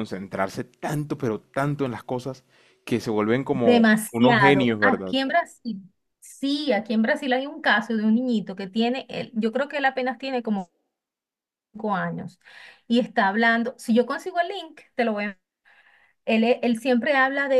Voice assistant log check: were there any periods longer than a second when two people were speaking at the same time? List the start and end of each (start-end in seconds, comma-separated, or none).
3.5-5.2